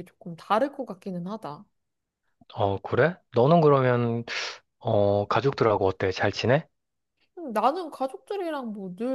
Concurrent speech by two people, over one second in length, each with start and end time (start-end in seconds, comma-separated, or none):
none